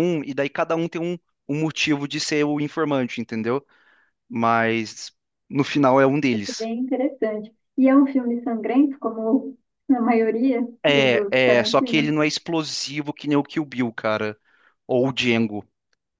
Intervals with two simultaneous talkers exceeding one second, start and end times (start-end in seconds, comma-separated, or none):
10.8-12.1